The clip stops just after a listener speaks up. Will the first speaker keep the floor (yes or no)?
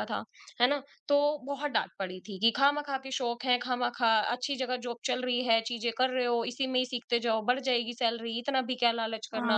no